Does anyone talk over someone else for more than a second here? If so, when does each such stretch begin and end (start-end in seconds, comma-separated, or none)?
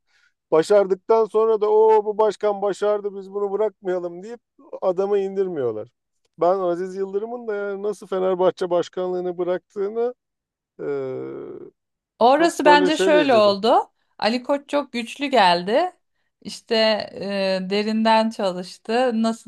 12.4-13.6